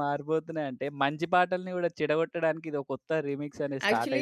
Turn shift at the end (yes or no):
yes